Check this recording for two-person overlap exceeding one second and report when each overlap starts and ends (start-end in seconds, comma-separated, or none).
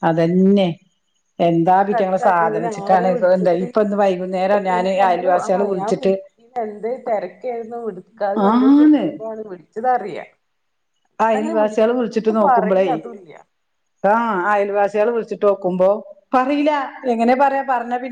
1.7-3.6